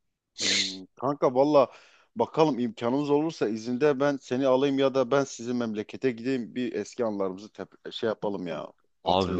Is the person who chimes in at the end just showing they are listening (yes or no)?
no